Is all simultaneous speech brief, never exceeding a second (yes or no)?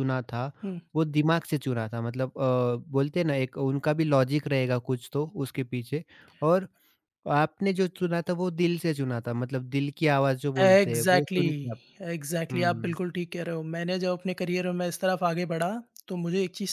no